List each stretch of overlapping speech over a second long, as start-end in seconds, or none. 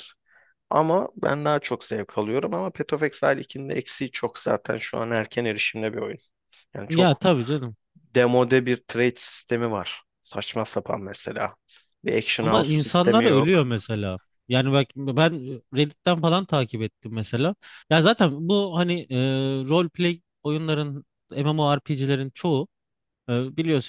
12.4-13.6